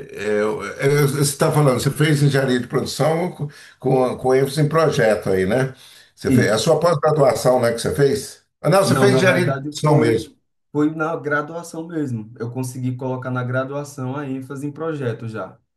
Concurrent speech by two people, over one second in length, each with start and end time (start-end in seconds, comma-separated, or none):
8.8-10.3